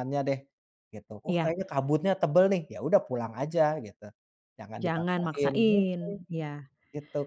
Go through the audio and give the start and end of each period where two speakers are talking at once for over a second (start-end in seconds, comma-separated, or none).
4.8-6.1